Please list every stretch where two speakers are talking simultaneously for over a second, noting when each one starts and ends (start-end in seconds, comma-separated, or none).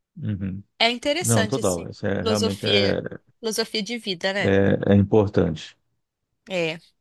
1.2-3.0